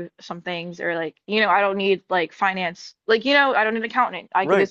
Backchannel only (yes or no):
no